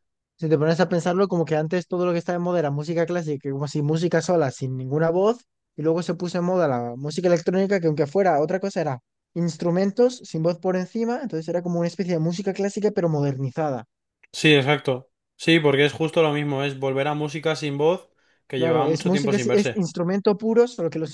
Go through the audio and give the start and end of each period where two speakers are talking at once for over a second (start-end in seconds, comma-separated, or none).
18.6-19.9